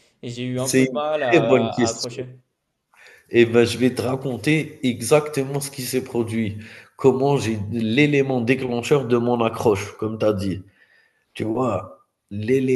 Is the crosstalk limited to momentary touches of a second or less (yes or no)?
no